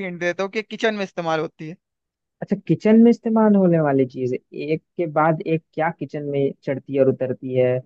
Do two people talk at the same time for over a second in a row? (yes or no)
no